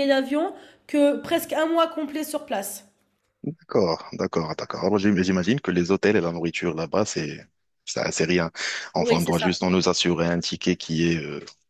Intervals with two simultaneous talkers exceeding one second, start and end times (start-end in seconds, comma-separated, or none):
none